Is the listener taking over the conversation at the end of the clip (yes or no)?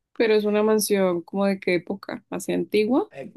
yes